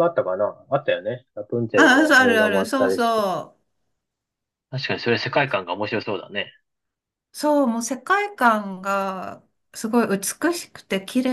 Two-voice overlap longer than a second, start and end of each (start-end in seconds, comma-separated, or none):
1.8-3.2